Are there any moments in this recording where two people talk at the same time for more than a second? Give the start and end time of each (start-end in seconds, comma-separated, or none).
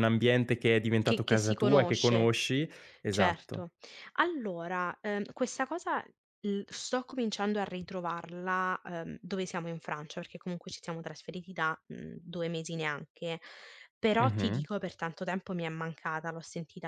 1.0-2.4